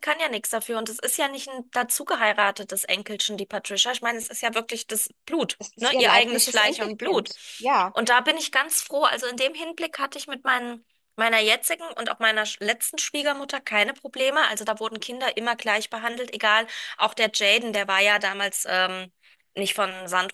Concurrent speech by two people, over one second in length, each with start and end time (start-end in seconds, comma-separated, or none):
5.6-7.3